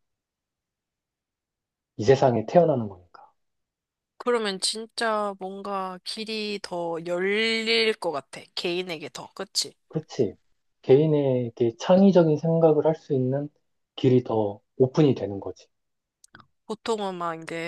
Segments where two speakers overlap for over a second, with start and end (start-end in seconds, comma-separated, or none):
none